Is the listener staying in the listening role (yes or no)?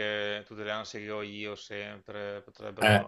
no